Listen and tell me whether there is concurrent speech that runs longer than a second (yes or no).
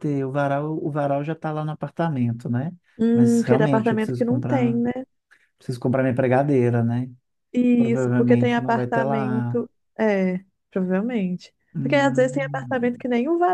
yes